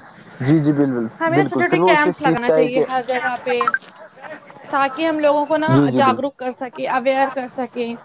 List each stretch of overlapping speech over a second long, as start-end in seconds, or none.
1.2-2.8, 5.7-7.5